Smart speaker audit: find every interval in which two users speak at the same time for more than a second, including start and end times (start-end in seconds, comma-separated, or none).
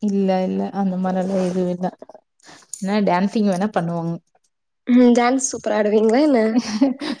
none